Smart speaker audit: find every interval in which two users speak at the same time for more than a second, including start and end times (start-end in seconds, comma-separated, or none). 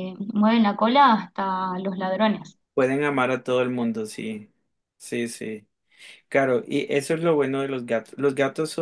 none